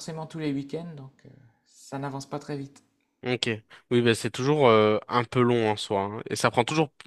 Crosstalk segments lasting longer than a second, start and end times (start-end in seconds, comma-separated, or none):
none